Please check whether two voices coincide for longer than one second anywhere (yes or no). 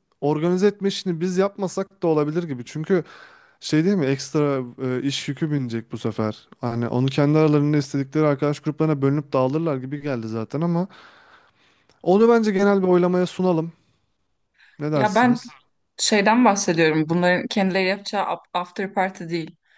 no